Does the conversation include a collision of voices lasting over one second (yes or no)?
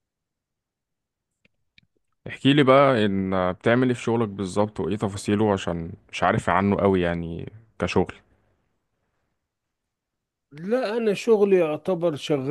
no